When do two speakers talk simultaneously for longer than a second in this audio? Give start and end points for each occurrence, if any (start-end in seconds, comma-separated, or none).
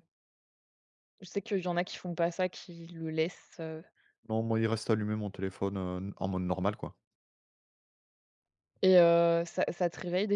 none